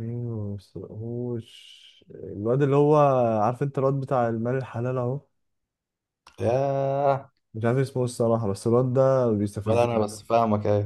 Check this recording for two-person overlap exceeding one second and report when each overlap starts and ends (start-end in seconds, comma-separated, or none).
none